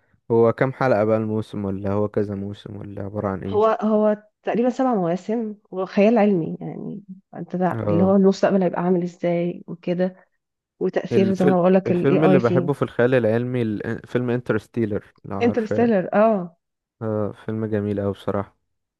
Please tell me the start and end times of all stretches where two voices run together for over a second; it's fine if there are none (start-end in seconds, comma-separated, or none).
11.1-12.7